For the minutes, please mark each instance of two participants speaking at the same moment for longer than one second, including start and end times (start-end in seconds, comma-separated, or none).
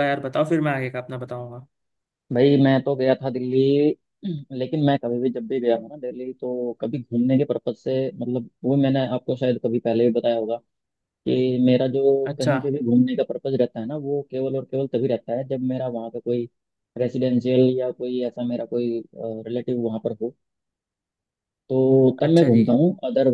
none